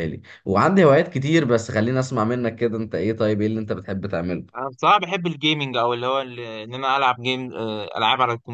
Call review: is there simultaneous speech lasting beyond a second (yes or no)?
no